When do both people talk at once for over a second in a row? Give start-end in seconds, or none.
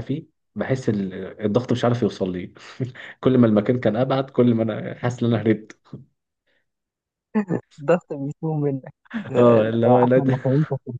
none